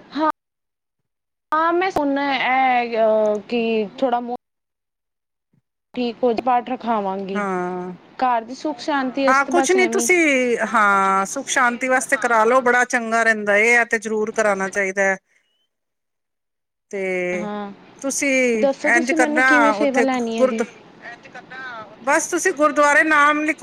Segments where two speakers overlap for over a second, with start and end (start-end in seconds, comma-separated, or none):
19.0-20.6